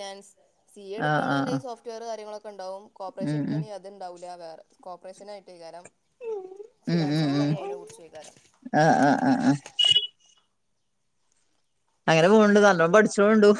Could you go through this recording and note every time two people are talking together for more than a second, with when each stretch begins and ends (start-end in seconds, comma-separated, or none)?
none